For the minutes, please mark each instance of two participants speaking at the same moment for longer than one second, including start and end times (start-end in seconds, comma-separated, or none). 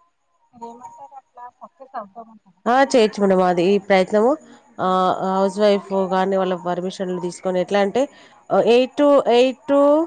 none